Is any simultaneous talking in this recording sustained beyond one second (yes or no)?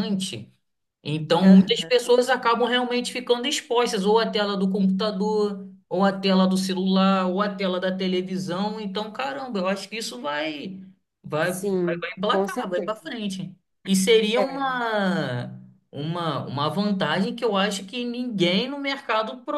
yes